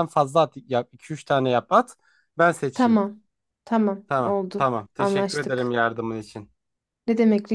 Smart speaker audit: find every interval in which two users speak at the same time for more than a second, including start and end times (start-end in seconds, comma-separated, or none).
4.1-5.7